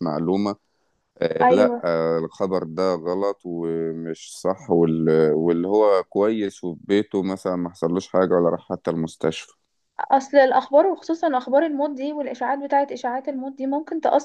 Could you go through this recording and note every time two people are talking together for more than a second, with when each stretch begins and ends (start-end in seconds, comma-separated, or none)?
none